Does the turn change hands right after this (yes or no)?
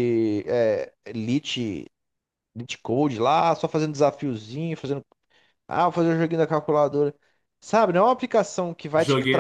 no